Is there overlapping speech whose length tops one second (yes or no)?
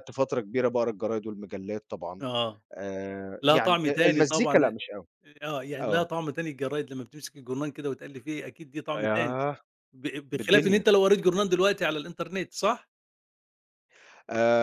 yes